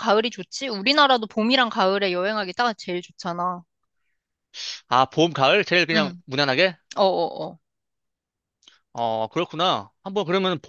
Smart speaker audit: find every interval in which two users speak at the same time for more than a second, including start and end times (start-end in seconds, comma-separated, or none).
none